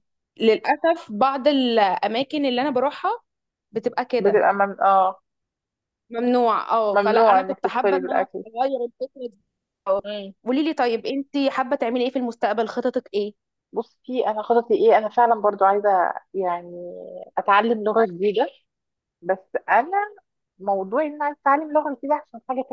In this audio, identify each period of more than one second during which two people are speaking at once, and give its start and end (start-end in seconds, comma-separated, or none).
6.9-8.4